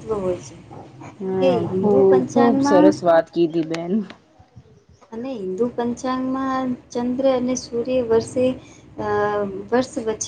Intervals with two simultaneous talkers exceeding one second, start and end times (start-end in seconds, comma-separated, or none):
1.2-2.9